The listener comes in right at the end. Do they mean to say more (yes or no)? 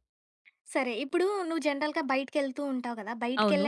no